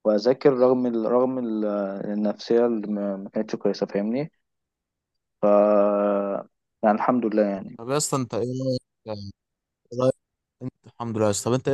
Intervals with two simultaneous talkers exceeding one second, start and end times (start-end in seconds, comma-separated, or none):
none